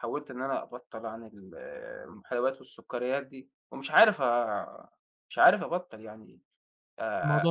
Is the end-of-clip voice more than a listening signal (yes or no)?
no